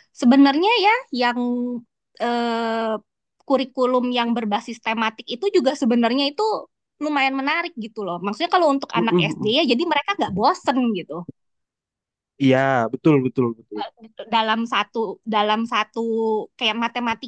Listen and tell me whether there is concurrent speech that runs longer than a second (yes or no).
no